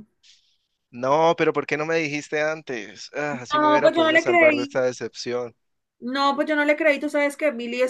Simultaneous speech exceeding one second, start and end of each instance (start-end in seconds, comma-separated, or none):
3.3-4.8